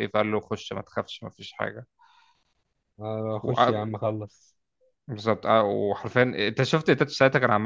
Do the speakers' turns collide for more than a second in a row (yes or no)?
no